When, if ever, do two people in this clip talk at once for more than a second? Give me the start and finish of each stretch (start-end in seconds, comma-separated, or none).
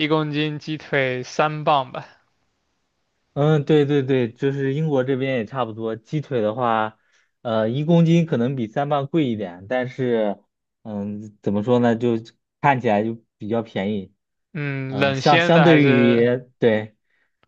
14.9-16.3